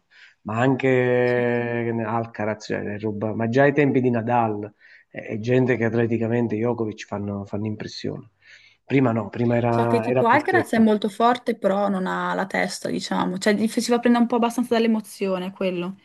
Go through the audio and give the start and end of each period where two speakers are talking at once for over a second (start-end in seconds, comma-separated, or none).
9.7-10.9